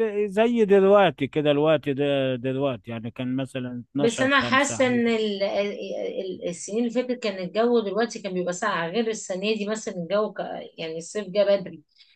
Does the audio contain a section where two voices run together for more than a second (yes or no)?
yes